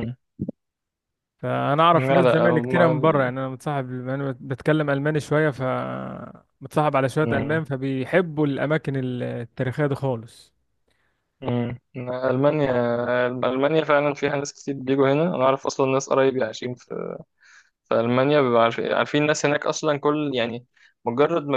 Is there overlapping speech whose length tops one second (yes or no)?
yes